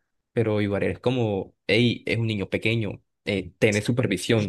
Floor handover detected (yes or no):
yes